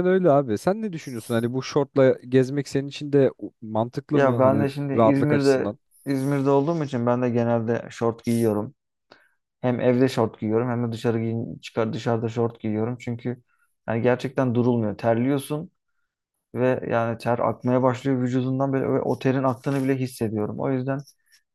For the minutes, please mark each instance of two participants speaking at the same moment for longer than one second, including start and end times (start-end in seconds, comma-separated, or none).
4.1-5.8